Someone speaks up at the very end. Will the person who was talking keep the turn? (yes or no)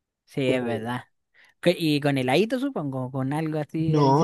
no